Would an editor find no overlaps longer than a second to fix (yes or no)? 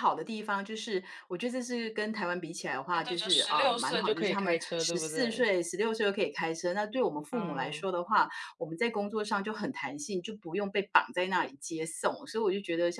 no